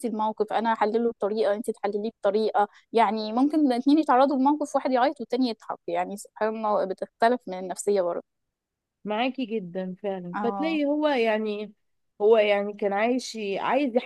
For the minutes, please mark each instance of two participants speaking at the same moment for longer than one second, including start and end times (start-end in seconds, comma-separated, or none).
none